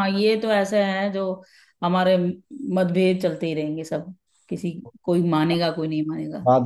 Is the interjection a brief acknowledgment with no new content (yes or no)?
no